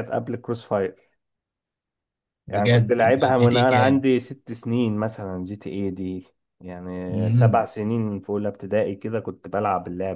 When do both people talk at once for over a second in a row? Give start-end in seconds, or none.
2.5-4.0